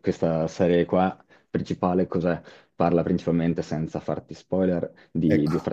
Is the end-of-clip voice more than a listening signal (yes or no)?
no